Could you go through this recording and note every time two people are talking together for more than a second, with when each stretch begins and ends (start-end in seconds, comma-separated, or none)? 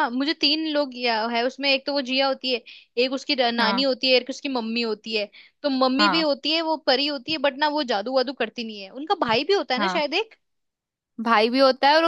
none